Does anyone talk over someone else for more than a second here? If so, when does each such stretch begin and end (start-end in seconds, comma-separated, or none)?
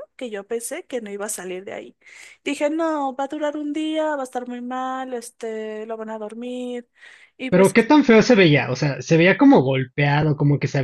none